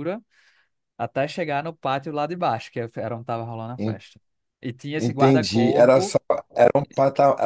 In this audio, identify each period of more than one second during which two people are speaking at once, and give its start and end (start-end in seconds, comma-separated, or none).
5.0-6.2